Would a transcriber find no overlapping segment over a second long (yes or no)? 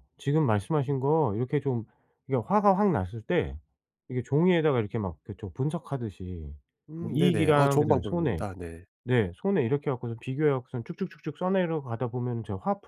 no